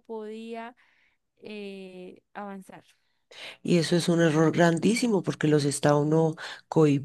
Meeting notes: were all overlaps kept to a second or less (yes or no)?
yes